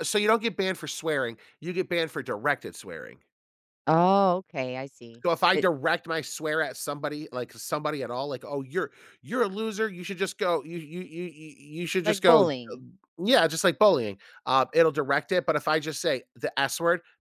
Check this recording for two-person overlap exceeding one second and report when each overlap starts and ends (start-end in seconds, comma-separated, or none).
none